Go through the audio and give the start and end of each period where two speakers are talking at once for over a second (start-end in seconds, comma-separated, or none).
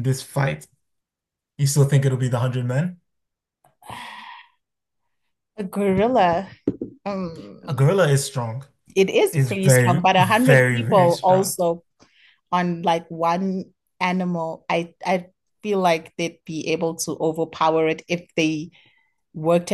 9.3-11.6